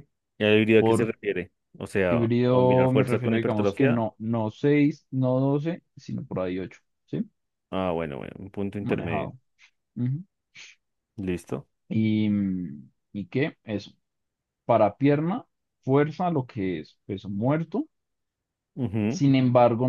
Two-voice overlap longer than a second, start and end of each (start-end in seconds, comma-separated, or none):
2.1-4.0